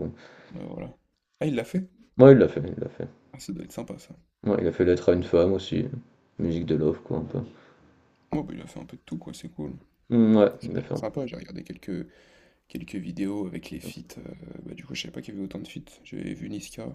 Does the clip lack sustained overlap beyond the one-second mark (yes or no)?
yes